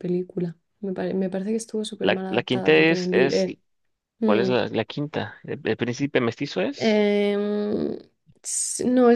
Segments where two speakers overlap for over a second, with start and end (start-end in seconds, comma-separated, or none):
2.0-3.4